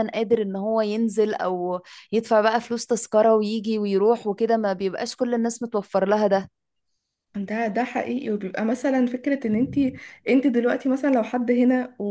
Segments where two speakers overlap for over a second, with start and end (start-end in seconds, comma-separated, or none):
none